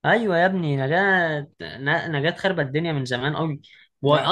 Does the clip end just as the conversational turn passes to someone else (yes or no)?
no